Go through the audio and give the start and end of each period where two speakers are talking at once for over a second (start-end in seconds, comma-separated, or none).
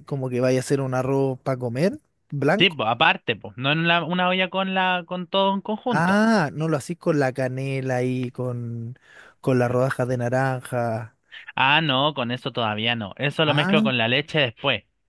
none